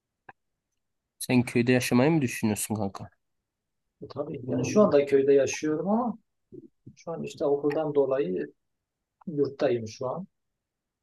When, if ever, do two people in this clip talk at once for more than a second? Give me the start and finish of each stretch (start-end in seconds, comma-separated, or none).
none